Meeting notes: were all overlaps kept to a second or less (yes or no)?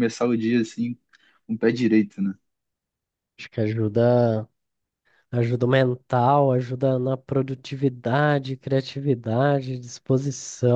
yes